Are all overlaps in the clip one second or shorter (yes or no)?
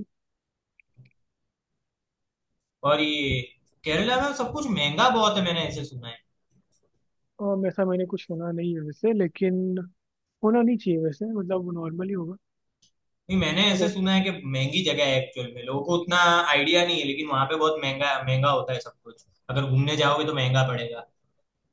yes